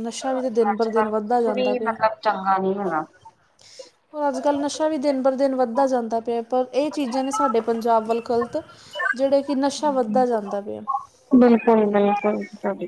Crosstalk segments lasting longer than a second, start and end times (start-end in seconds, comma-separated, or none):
0.7-1.9